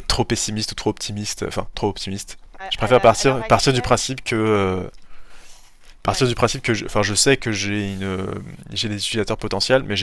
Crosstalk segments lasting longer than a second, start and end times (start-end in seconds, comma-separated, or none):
2.6-4.0